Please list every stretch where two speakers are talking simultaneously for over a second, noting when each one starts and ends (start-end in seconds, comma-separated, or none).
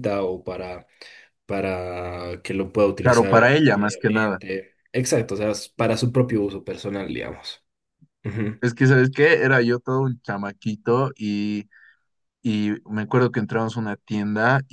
3.0-4.4